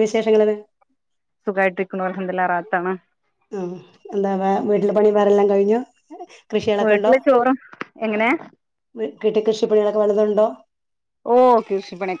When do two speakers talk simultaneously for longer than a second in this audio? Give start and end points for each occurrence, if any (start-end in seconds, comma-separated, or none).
none